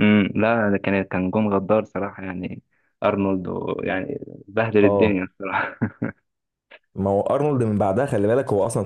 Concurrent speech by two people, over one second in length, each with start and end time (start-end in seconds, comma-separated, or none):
none